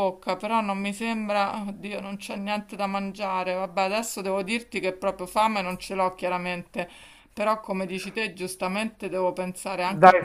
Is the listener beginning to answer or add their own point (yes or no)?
yes